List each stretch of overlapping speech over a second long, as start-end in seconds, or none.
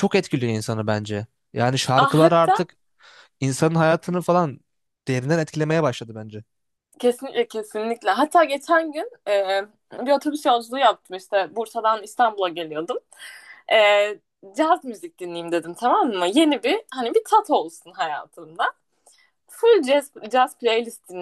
none